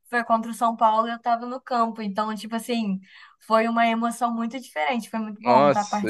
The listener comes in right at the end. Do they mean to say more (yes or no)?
yes